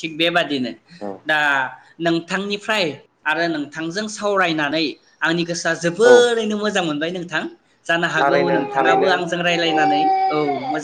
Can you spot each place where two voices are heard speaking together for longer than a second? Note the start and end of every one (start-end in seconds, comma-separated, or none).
8.2-9.8